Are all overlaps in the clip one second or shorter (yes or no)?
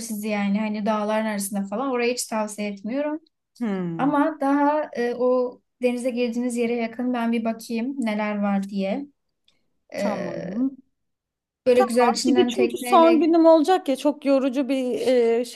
no